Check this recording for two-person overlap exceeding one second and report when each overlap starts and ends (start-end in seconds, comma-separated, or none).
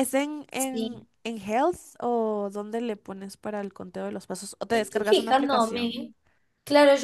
4.7-6.0